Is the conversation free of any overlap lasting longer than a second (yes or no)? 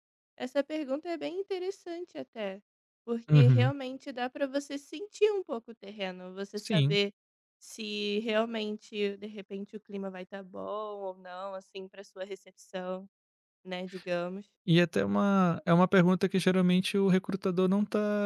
yes